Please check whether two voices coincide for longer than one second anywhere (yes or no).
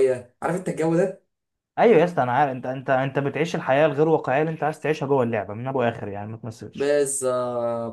no